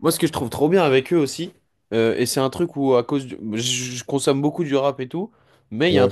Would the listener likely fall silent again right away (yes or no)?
yes